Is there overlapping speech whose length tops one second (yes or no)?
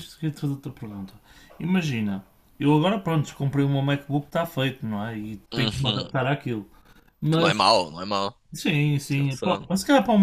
no